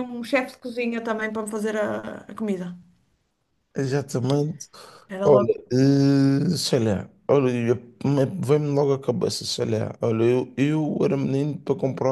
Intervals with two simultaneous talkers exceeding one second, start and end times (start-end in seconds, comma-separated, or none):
none